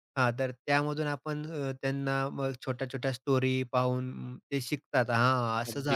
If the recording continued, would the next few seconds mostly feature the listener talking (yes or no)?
yes